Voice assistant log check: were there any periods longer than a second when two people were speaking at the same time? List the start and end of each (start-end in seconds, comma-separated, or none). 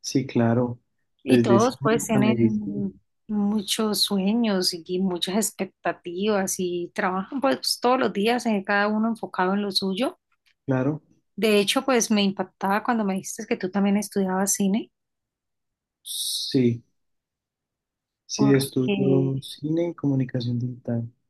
1.2-2.8